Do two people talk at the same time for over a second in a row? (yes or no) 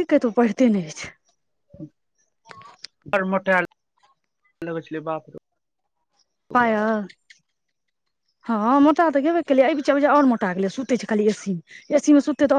no